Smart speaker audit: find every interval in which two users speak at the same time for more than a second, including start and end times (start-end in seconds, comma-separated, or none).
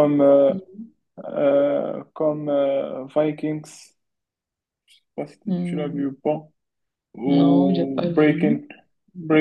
7.3-8.6